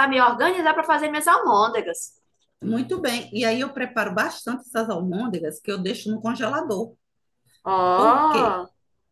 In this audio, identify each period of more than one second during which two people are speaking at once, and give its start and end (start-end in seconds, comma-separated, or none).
none